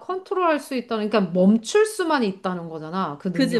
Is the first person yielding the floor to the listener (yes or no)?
yes